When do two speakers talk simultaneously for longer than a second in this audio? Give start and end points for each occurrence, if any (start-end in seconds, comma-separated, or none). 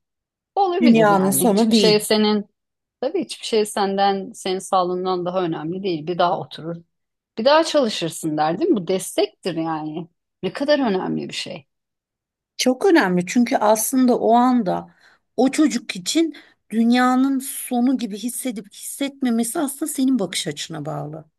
0.8-2.0